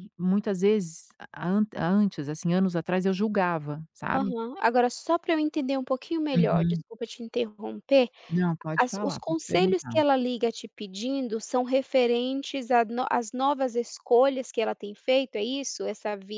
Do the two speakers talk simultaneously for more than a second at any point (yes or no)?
yes